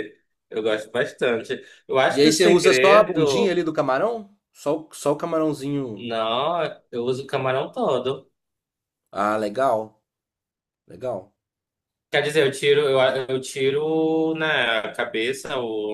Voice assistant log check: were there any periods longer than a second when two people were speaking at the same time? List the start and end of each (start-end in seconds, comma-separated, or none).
2.1-3.6